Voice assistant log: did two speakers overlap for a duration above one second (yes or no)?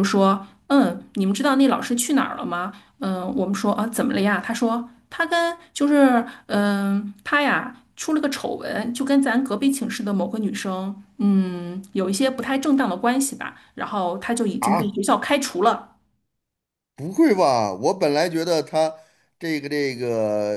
no